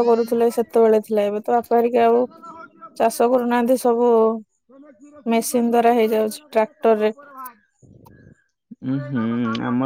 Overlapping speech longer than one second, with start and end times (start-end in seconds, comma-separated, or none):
5.3-7.0